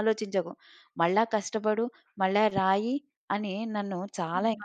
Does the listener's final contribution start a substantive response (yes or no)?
yes